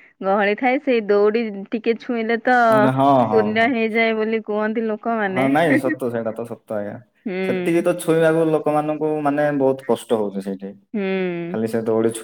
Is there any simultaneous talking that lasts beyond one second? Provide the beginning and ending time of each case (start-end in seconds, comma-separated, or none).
none